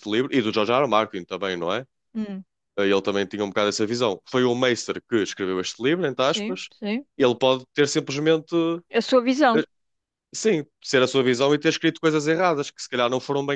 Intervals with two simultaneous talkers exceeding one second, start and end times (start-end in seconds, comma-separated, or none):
none